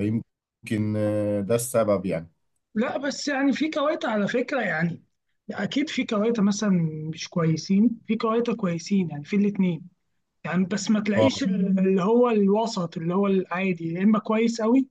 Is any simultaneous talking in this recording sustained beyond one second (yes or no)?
no